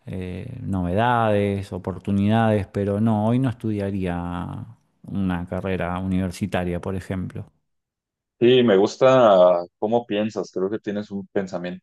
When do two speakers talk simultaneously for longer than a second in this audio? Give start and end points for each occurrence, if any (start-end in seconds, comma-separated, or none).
none